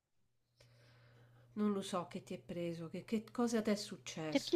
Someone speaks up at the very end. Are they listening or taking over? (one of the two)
taking over